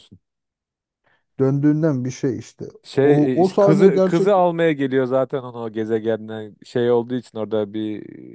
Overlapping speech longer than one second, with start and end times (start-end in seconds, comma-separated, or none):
3.0-4.3